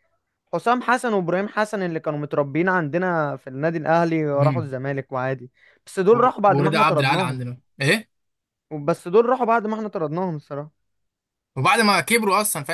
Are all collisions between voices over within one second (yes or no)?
no